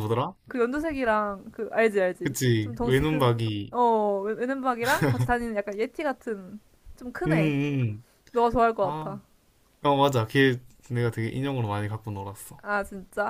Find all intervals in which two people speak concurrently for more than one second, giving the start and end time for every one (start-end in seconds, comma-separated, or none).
2.2-3.7